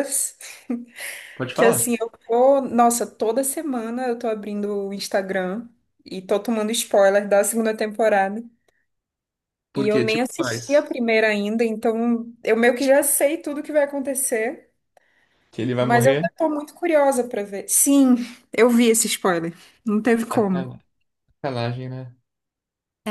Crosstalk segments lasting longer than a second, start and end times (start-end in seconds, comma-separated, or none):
9.8-11.0